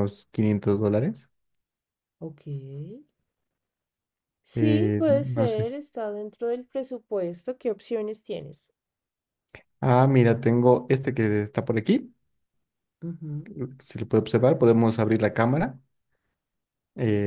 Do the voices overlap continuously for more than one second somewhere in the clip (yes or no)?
yes